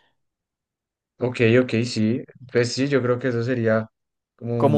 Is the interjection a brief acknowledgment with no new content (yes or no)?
no